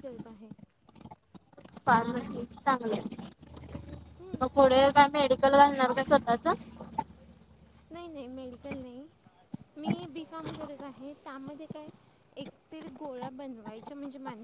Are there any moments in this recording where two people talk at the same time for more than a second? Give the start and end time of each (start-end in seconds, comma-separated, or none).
none